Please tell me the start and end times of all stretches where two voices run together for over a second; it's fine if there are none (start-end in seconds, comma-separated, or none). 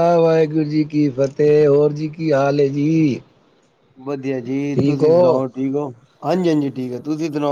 none